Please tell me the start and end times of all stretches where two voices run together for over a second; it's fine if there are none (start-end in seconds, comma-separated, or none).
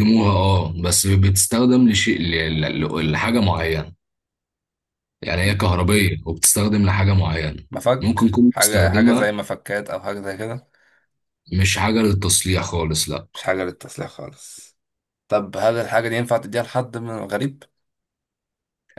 8.0-9.3